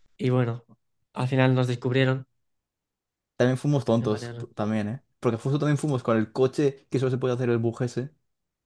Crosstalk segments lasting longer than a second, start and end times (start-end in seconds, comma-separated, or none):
none